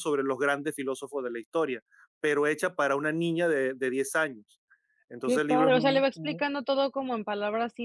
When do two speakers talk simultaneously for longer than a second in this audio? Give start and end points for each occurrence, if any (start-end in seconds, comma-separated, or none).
5.2-6.5